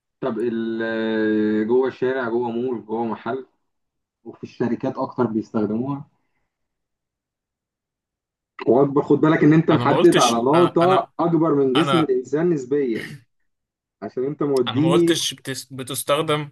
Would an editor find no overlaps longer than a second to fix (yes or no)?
no